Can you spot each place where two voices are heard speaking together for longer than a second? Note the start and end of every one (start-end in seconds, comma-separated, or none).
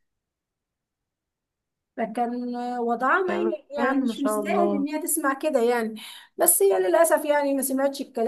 3.3-4.9